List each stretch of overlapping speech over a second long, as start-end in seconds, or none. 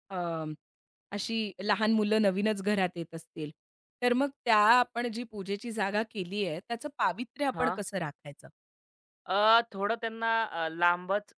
none